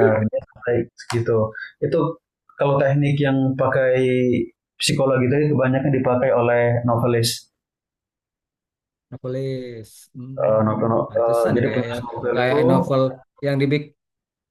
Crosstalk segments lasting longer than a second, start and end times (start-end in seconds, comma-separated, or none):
10.4-12.6